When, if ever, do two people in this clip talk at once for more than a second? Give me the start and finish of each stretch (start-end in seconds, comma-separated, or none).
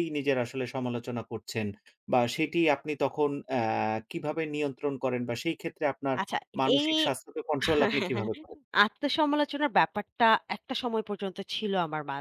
none